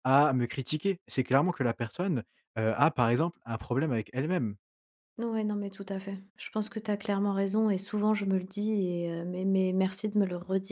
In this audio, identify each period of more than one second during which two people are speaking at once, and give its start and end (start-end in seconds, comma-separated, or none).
none